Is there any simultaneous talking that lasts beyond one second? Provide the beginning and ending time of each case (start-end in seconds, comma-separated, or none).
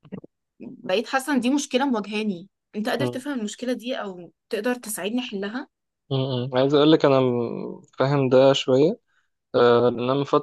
none